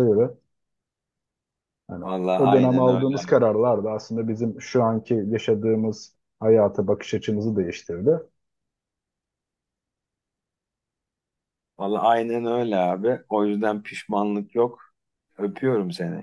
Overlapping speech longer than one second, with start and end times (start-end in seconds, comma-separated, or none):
2.0-3.4